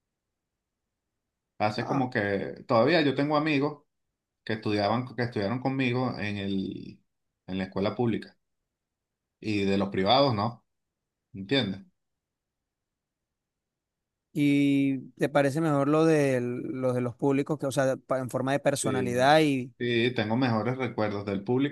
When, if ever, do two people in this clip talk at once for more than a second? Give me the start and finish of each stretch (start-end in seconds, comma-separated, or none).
none